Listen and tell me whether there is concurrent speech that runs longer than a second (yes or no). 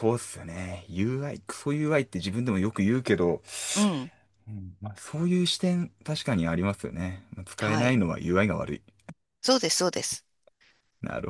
no